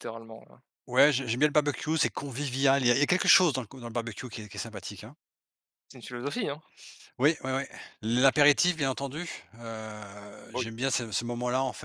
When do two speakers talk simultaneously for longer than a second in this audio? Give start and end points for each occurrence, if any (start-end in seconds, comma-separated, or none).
none